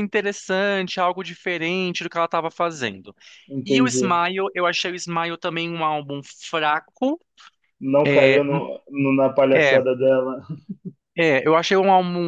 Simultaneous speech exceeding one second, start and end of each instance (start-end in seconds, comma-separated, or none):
none